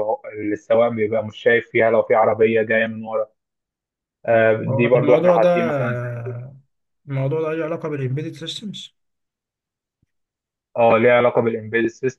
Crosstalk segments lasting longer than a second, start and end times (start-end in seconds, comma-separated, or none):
4.7-5.9